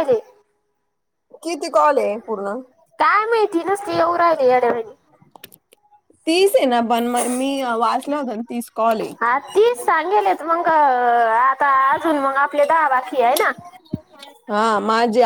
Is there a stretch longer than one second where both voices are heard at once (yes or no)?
no